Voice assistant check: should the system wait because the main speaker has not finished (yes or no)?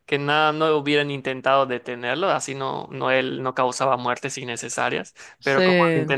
yes